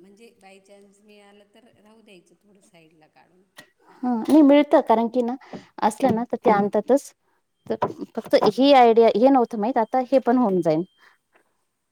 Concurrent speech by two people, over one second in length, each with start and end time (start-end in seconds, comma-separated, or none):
none